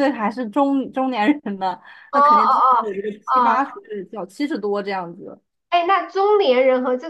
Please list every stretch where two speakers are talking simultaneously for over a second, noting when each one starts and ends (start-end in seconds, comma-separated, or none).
2.1-3.8